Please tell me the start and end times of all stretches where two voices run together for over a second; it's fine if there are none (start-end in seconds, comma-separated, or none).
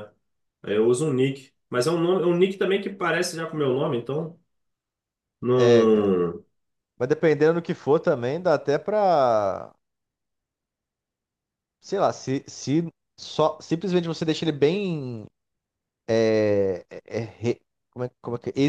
none